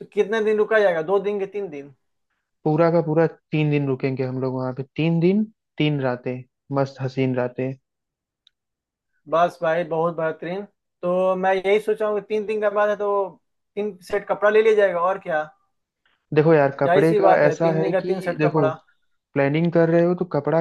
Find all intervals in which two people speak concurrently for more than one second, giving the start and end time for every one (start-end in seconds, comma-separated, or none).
16.8-18.7